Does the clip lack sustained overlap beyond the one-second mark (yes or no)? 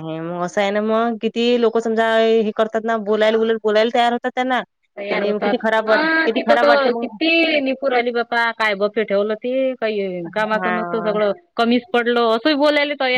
no